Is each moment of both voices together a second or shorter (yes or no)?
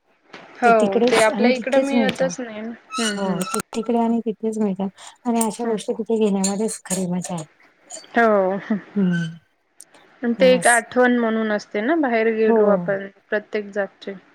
no